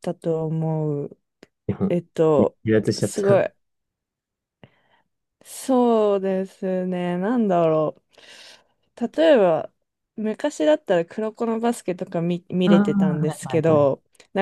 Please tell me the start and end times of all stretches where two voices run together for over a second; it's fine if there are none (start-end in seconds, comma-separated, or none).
12.7-13.9